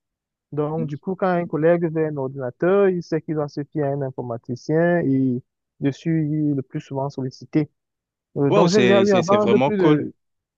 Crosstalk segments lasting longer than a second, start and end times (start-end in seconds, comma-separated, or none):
8.5-10.0